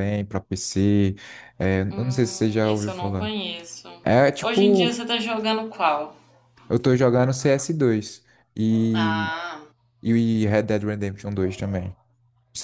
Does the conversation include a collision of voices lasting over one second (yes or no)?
yes